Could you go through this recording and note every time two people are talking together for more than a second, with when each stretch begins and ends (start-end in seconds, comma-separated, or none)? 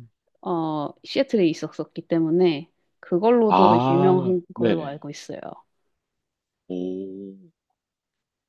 3.5-5.0